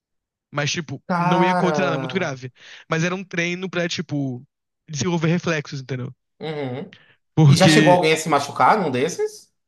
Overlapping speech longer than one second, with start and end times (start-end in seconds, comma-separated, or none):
1.1-2.3